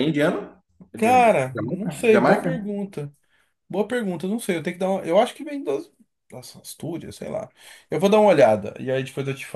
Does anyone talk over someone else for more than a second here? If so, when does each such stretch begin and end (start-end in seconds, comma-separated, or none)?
1.0-2.7